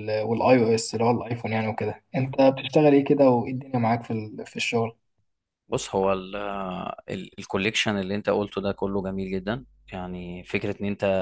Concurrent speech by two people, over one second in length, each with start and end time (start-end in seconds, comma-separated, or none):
none